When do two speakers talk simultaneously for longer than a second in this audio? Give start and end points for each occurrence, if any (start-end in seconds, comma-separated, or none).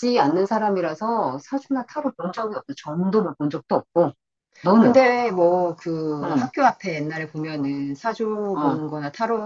none